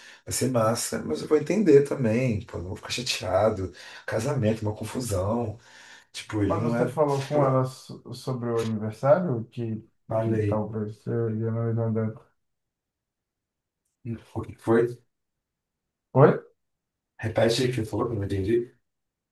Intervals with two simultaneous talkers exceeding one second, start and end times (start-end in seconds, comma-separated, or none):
none